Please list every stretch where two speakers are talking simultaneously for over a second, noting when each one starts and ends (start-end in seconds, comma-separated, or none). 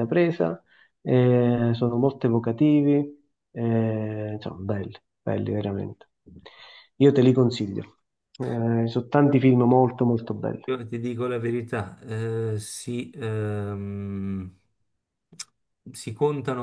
none